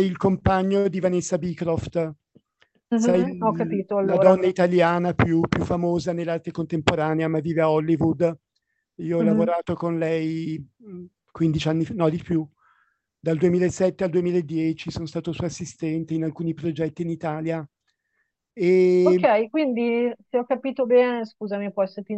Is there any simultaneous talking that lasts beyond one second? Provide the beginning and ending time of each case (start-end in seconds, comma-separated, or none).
2.9-4.3